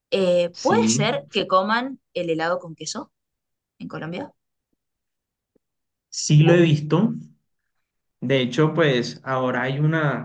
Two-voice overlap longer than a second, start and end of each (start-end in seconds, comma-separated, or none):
none